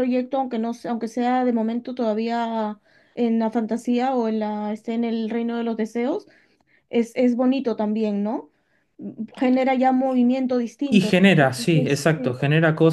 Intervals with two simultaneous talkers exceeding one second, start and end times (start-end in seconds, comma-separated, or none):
10.9-12.4